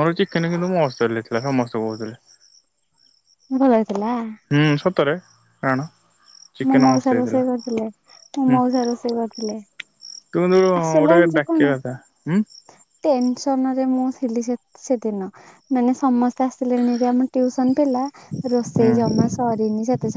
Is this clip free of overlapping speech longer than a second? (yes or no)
yes